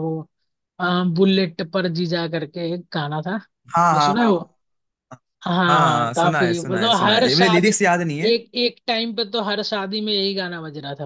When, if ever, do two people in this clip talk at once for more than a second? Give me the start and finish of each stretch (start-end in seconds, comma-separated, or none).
5.7-7.7